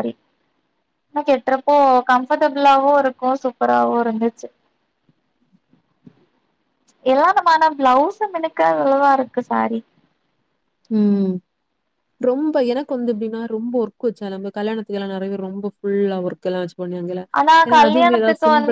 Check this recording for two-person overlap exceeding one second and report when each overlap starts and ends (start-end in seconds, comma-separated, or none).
none